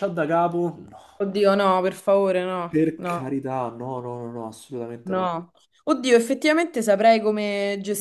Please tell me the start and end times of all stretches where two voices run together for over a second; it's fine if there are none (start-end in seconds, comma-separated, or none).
none